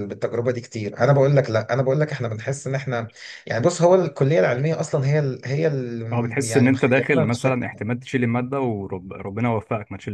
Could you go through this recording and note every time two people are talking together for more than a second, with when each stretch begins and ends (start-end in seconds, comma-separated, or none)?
6.1-7.8